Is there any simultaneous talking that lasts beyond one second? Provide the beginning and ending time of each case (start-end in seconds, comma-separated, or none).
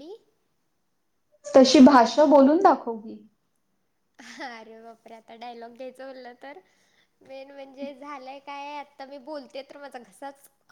none